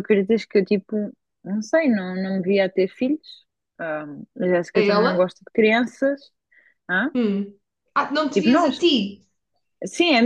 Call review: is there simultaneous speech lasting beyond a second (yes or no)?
no